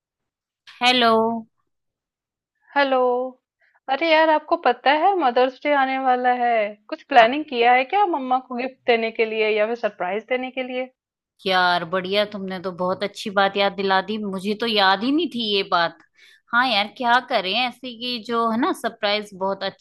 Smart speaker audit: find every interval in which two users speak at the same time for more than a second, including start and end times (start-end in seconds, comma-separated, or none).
none